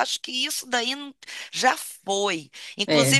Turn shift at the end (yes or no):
no